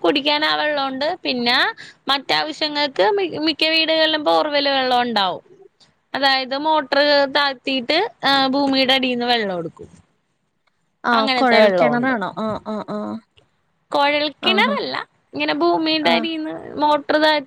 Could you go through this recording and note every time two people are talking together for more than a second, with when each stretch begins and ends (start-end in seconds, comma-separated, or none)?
none